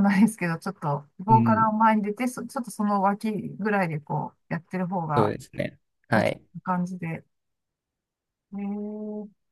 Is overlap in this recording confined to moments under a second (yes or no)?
yes